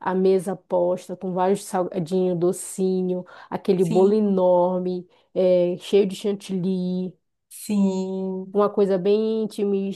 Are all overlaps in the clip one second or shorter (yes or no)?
yes